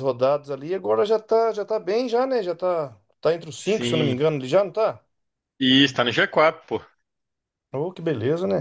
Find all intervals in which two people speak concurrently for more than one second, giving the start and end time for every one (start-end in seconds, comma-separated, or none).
none